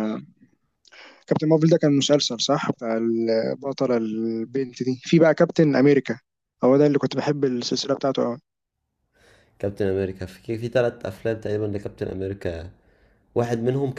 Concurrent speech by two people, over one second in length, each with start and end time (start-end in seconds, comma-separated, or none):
none